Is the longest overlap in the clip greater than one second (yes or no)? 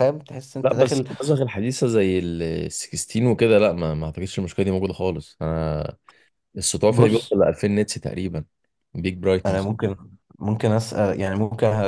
no